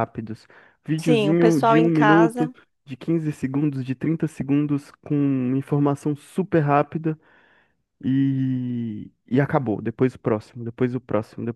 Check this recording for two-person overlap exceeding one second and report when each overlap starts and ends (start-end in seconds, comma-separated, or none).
1.0-2.5